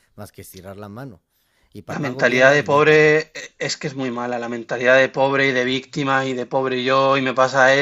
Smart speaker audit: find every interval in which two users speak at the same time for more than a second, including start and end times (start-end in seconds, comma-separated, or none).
1.9-3.2